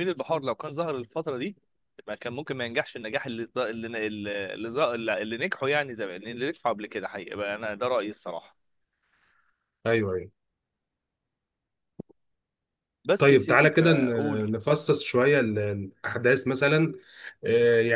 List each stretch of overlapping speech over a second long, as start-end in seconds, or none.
13.2-14.5